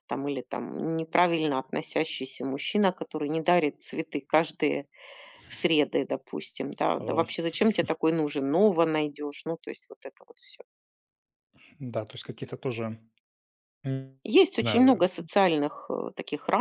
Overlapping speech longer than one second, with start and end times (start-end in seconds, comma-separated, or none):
none